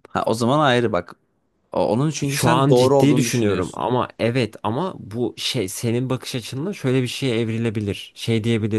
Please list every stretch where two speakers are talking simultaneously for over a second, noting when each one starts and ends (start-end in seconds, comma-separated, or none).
2.3-3.8